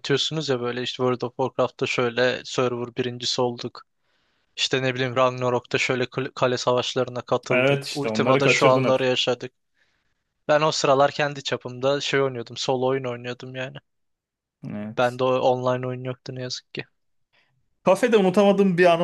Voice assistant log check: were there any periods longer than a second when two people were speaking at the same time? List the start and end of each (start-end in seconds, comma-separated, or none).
7.5-9.0